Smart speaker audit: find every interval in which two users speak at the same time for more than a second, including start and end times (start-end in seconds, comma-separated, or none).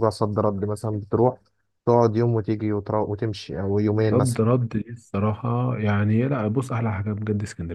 none